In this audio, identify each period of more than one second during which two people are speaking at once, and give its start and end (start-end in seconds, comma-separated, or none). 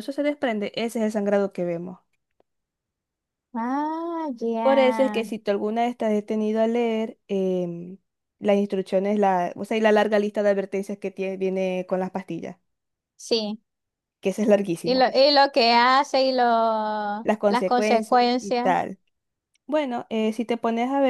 17.5-18.7